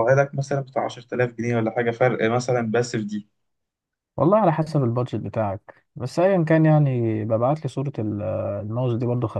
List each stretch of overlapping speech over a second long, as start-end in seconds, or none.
none